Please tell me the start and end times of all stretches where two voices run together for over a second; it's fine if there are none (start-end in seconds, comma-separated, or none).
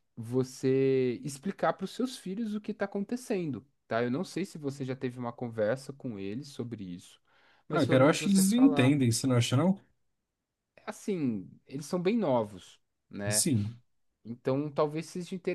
7.7-9.0